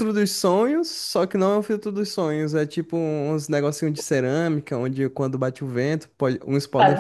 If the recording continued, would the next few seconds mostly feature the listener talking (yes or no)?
no